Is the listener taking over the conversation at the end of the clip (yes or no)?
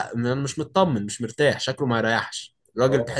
no